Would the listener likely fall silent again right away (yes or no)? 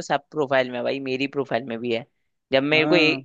yes